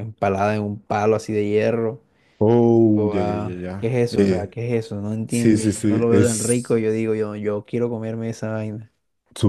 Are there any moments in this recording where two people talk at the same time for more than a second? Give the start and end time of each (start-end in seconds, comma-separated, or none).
2.8-4.5, 5.3-6.6